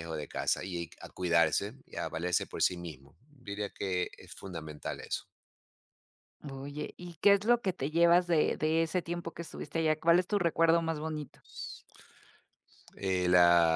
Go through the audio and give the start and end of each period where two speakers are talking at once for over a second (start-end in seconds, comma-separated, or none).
none